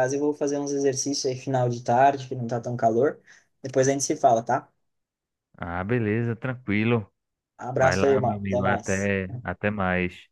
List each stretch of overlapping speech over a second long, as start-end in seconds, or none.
7.8-9.2